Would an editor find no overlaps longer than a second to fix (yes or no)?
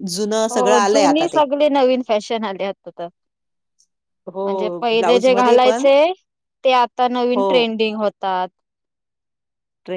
no